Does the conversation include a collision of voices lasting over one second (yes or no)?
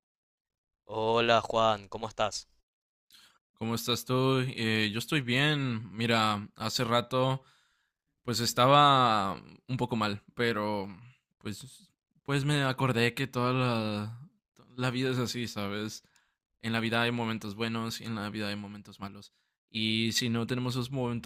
no